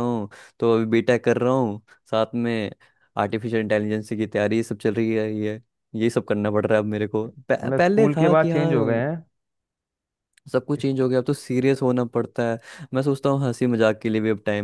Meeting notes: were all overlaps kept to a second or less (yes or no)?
no